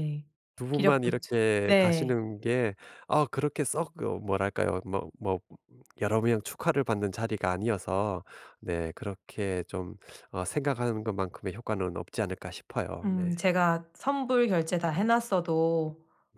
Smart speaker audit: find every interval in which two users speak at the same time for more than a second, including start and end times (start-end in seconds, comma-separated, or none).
0.7-2.2